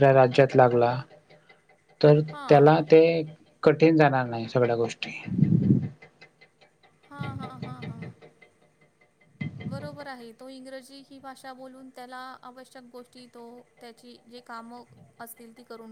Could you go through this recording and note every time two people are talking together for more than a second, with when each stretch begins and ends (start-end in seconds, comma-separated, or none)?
none